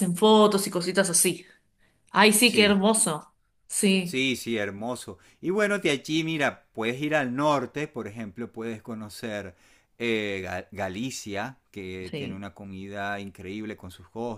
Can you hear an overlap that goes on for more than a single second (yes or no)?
no